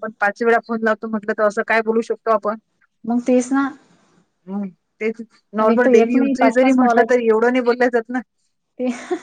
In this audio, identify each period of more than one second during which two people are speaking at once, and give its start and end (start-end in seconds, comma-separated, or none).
5.6-7.1